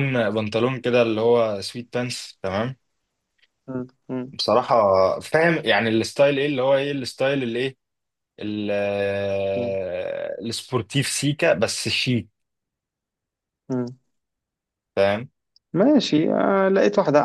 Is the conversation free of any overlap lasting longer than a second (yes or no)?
yes